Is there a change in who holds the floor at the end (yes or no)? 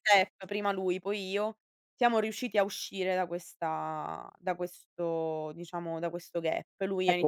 yes